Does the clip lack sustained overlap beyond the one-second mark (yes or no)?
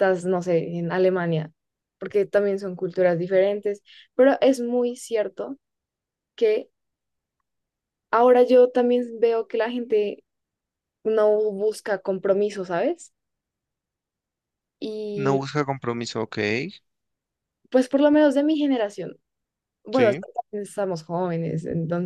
yes